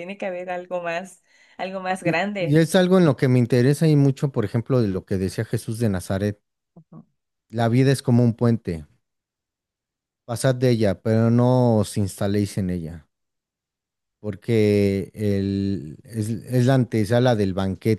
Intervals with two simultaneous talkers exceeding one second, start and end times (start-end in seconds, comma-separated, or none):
none